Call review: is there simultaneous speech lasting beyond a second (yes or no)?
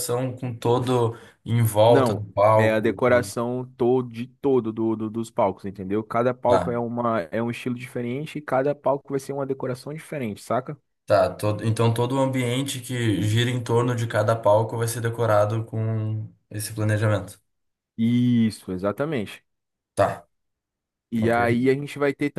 yes